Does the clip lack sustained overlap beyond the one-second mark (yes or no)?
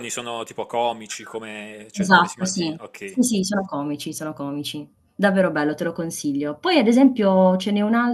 no